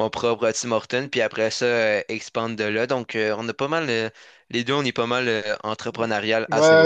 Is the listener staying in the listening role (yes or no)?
no